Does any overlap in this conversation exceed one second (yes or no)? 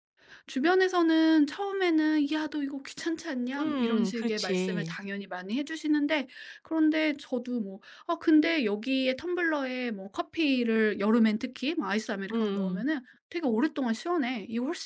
yes